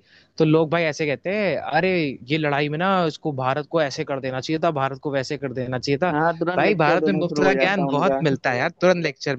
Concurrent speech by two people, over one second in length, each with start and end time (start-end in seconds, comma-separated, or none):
6.6-8.2